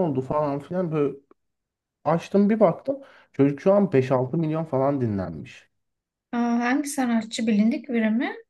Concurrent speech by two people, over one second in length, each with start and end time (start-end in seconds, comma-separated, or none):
none